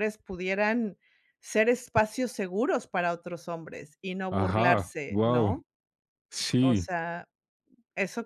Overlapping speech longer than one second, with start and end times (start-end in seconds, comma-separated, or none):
4.3-5.6